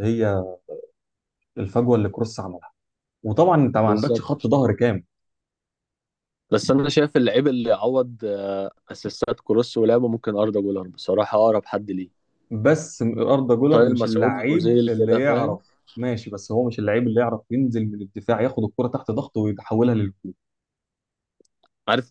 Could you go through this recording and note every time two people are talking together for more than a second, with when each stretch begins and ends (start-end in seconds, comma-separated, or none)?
13.7-15.6